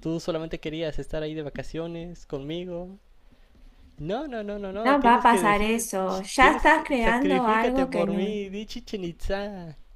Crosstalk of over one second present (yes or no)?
yes